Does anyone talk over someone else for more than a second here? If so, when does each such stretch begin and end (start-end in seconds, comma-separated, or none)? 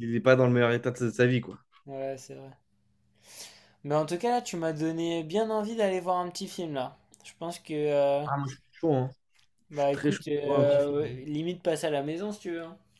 9.7-11.0